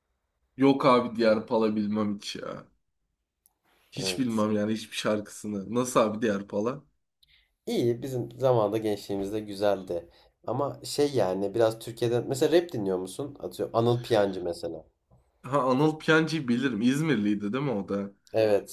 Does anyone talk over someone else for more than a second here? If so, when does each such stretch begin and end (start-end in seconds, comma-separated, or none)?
none